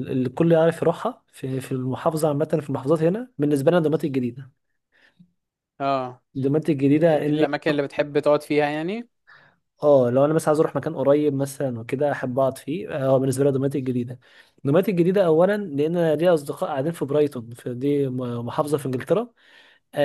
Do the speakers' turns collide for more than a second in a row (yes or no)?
no